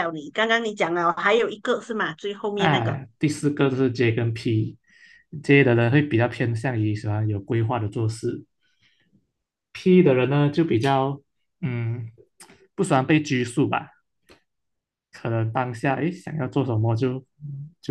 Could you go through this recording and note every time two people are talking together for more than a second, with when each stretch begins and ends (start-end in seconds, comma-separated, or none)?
none